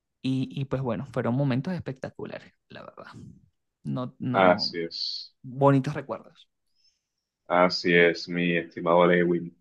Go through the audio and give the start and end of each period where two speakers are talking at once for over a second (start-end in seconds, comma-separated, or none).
none